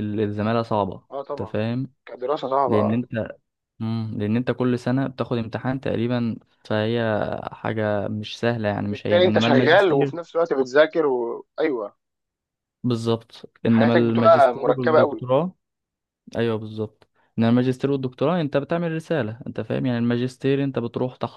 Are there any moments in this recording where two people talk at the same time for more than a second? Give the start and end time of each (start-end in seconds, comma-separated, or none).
8.8-10.2, 13.7-15.2